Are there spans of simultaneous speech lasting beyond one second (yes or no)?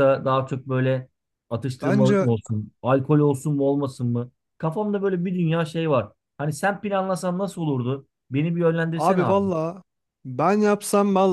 no